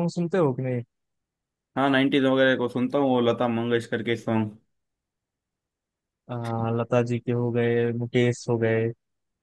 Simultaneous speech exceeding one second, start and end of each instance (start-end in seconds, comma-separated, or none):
none